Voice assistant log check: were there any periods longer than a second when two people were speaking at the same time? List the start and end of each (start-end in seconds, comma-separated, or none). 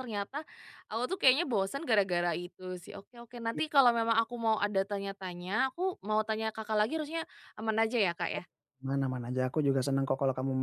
none